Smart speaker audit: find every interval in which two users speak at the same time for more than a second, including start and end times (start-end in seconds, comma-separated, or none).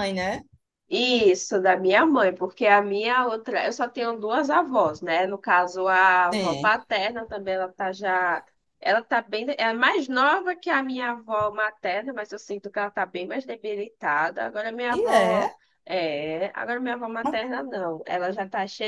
none